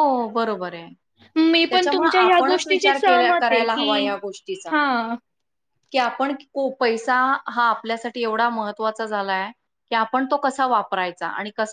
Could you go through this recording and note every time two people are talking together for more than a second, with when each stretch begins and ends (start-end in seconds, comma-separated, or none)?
1.7-3.9